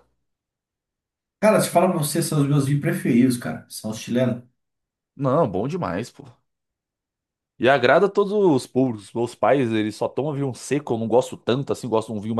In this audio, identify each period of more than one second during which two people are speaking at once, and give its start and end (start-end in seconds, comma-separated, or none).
none